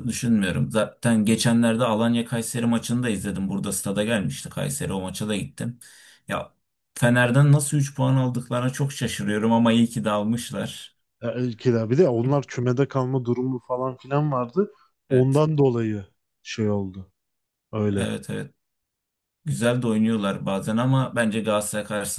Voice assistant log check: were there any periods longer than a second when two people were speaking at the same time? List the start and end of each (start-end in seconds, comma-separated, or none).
none